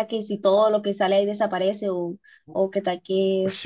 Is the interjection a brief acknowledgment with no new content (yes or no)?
no